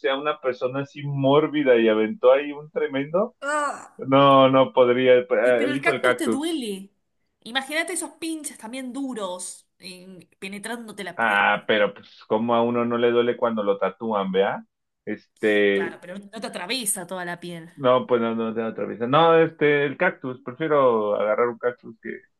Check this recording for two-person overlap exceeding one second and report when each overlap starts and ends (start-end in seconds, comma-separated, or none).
5.4-6.6